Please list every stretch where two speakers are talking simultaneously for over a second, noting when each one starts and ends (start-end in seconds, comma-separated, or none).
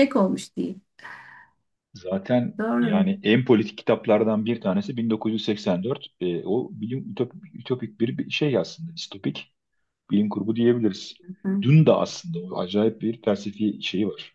none